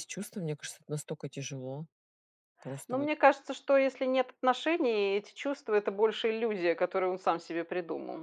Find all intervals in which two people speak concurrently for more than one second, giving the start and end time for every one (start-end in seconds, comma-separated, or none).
none